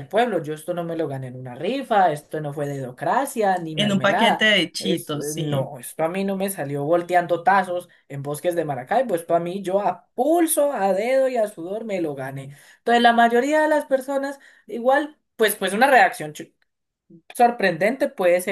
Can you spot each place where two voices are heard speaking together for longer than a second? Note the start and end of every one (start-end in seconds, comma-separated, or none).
3.8-5.7